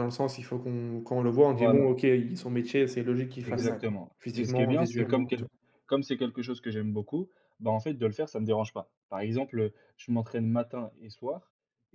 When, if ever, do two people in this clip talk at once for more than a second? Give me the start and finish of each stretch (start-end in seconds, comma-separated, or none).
3.4-5.5